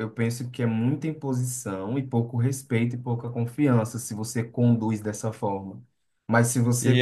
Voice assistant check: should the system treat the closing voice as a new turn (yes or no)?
no